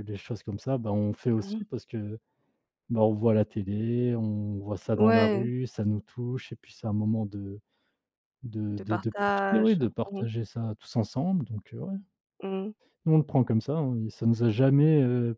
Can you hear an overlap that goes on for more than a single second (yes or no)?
yes